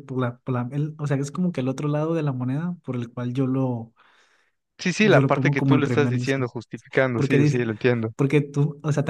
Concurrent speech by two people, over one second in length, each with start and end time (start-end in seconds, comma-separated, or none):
5.0-6.4